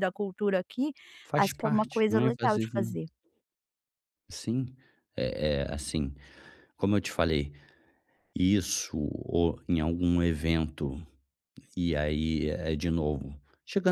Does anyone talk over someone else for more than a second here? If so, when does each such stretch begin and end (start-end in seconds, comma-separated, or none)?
1.4-3.0